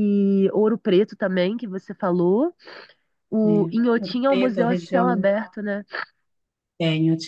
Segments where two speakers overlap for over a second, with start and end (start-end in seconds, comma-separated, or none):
3.4-5.3